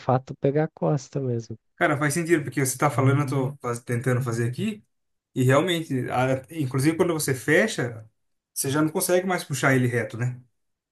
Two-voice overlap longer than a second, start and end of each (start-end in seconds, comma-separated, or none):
none